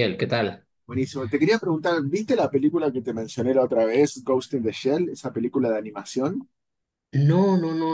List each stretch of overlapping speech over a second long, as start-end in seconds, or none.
none